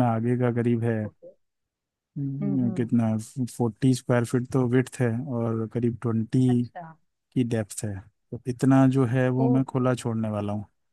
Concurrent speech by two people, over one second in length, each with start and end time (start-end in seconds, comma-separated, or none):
none